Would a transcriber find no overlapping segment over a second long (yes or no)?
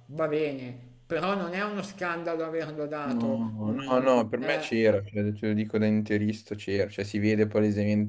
no